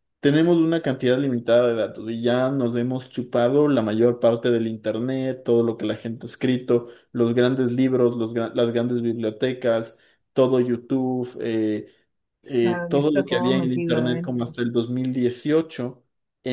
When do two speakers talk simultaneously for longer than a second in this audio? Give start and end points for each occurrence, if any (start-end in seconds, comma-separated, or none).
12.6-14.5